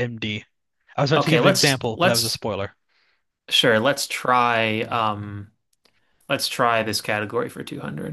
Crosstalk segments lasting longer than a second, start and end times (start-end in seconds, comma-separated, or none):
1.2-2.4